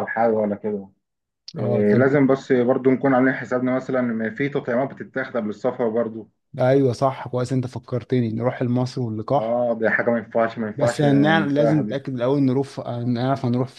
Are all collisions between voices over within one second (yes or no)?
no